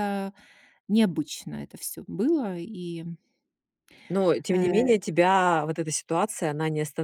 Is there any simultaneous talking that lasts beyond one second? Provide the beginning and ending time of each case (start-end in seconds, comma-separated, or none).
none